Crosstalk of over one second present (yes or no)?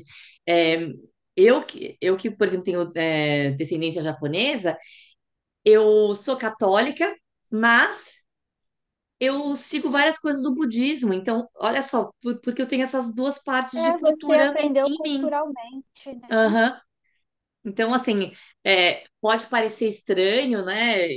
yes